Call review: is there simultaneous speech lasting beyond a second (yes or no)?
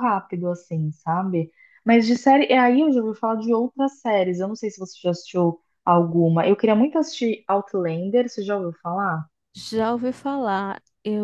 no